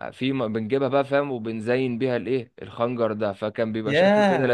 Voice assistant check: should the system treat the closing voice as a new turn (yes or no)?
yes